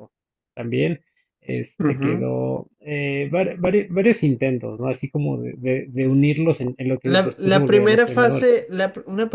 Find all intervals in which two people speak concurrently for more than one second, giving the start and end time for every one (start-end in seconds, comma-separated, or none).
7.0-8.6